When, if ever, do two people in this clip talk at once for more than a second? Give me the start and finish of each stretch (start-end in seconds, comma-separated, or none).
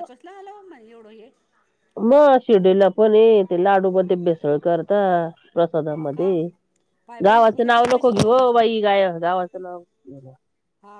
7.2-8.6